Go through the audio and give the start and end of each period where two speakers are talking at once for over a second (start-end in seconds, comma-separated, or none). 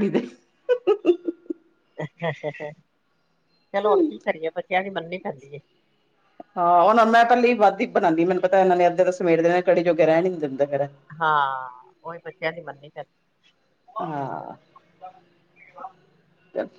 none